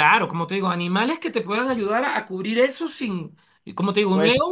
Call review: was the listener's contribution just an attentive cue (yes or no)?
yes